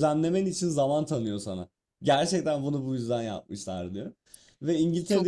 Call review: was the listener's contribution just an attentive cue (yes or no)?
yes